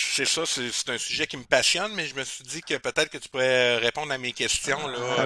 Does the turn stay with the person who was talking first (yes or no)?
no